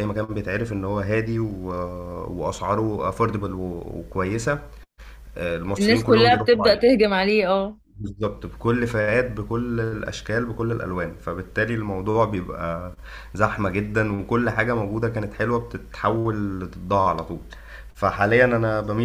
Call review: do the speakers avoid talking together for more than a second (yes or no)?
no